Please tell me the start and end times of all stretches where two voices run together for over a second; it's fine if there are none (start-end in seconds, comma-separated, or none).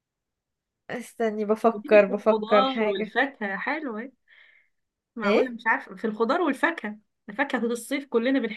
1.7-3.1